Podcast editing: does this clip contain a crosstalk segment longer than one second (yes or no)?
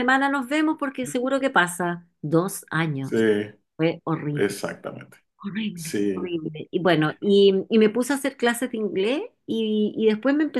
no